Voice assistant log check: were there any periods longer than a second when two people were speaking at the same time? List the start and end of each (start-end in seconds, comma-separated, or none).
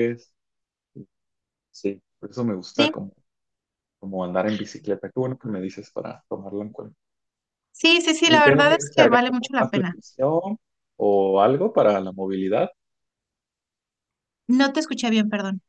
8.2-10.0